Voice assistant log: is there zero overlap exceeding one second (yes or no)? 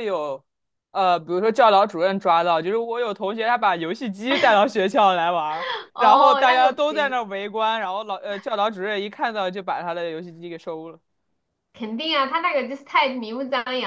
no